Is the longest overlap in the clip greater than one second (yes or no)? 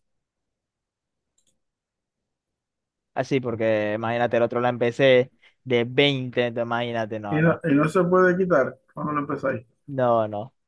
no